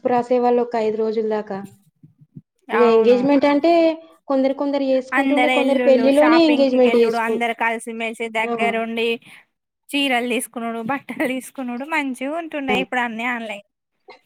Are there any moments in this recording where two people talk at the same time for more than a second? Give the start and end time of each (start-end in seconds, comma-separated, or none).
5.2-7.3